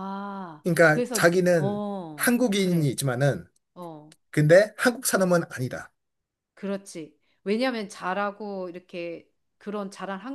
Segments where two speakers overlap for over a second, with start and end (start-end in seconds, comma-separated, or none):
0.6-3.0